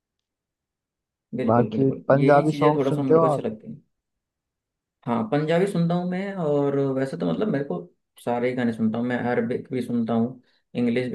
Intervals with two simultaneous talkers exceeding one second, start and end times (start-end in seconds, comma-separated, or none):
1.5-3.5